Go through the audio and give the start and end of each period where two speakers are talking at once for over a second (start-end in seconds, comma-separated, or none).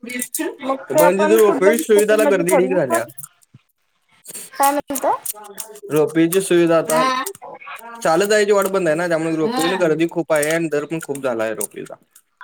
1.0-3.0